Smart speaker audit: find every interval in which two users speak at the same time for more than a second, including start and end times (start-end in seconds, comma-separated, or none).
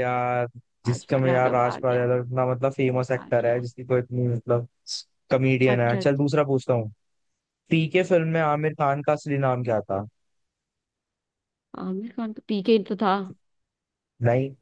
0.9-2.1